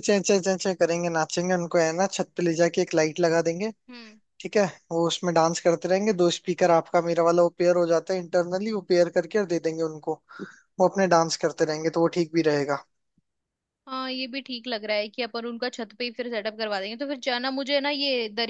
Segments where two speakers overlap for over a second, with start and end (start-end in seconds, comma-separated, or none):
none